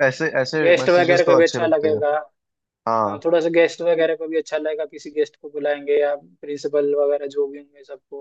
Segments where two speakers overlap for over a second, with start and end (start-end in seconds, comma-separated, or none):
0.6-2.0